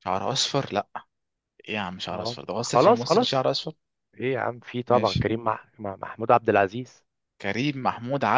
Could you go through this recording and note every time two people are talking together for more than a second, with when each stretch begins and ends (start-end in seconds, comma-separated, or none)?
2.1-3.4